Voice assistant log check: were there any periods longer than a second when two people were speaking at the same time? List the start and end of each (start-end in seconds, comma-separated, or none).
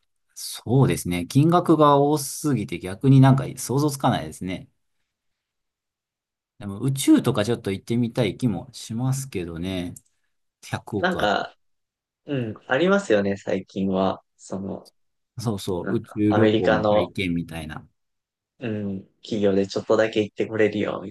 15.8-17.1